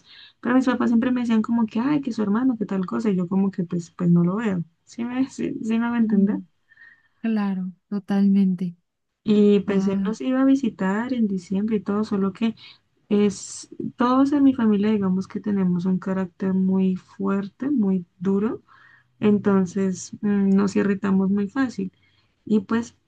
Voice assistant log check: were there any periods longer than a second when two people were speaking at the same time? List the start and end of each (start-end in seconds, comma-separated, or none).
none